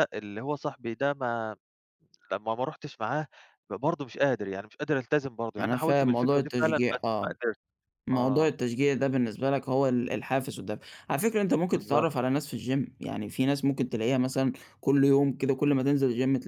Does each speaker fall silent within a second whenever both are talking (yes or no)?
no